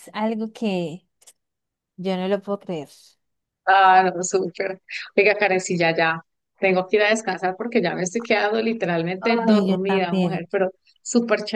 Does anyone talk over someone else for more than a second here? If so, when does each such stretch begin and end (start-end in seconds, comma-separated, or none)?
9.2-10.4